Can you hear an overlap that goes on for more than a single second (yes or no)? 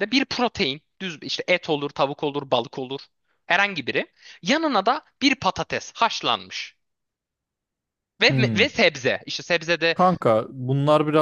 no